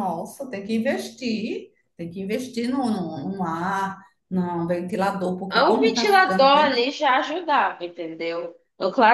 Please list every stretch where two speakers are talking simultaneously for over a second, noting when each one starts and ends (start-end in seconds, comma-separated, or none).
5.5-6.8